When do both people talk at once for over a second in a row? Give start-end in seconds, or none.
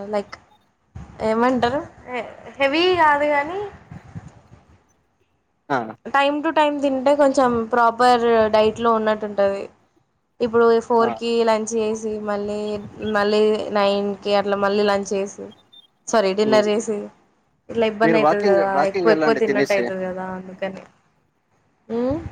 18.0-19.8